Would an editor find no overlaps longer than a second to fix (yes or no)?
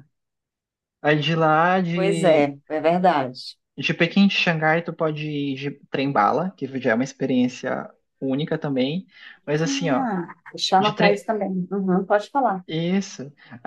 yes